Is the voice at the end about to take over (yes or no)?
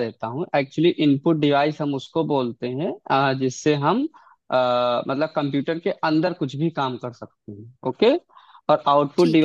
no